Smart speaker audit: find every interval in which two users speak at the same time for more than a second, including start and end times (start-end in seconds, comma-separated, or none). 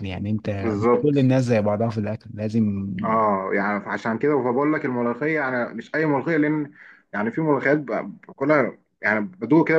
none